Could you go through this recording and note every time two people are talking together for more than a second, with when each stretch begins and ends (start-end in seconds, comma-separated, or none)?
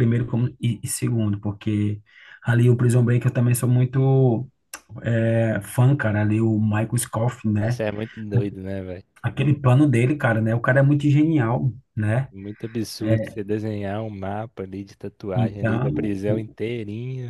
15.3-16.6